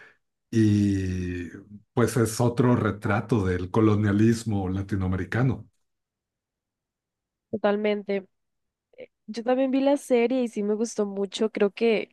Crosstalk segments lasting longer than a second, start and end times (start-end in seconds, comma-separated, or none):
none